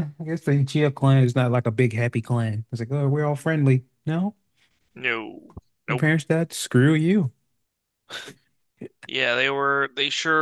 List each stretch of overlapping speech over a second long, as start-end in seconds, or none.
none